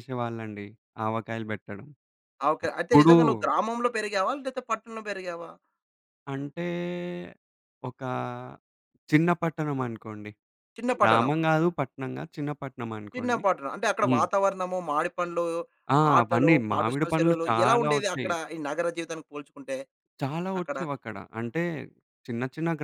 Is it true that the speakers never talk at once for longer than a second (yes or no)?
no